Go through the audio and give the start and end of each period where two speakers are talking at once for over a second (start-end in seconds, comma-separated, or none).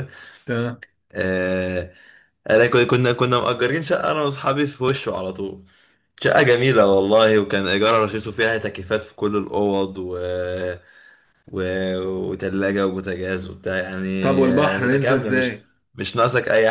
14.2-15.6